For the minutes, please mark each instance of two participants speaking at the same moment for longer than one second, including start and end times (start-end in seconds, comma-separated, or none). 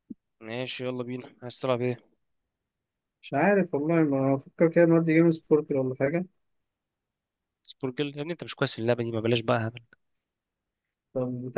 none